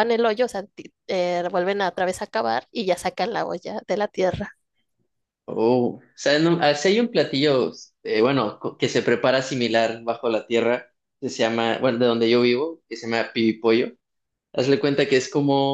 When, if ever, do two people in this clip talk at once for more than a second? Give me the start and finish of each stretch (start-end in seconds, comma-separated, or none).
none